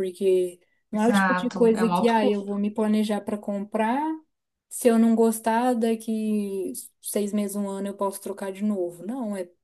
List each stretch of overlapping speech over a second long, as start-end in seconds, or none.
0.9-2.5